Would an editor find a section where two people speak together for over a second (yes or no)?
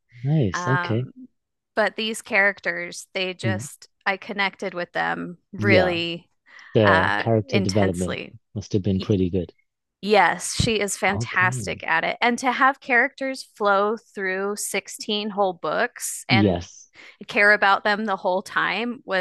yes